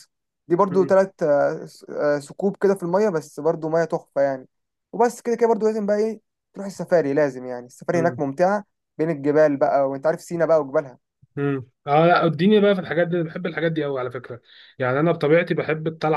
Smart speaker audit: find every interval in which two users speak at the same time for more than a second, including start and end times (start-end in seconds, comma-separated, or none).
none